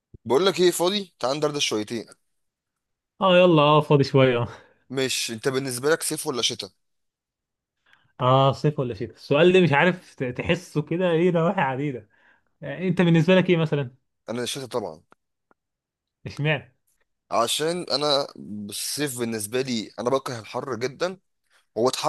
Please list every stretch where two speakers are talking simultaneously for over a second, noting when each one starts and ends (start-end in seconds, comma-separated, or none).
none